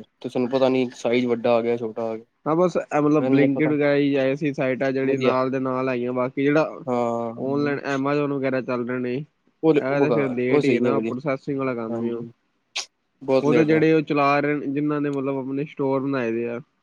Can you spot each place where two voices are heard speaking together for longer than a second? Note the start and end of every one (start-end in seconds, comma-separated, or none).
9.6-11.1